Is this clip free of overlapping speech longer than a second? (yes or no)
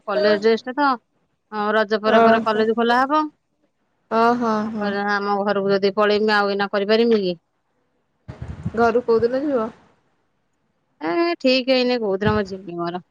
yes